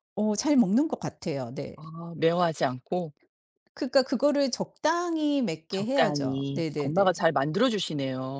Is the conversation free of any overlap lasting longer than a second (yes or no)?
no